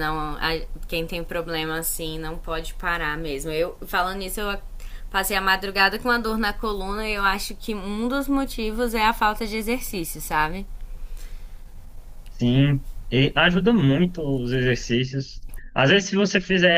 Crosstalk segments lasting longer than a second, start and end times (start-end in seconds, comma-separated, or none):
none